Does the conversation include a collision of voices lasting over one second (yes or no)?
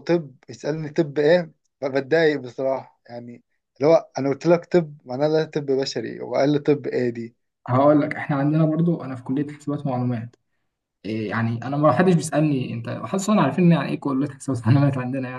no